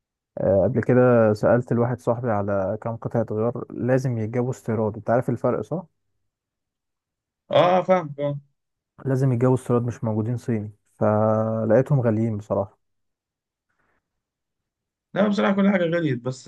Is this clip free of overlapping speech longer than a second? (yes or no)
yes